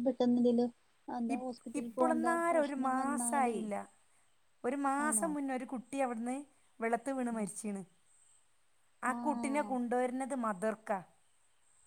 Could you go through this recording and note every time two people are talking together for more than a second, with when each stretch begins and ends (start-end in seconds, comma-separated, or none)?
none